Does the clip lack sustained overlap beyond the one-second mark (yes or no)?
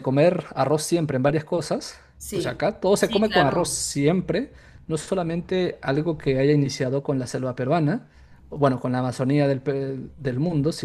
no